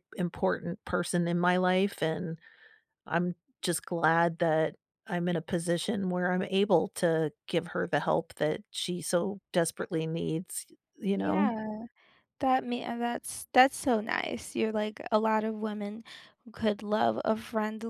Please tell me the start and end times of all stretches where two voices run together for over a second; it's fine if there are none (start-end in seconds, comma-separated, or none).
none